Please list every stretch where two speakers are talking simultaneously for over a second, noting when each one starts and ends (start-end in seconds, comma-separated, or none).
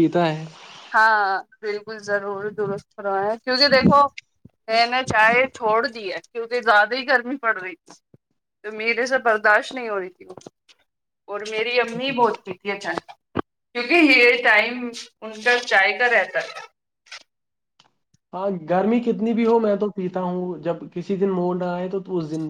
none